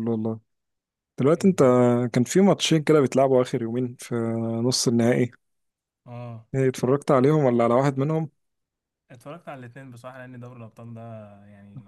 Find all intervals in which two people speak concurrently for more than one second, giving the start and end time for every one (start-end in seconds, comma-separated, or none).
none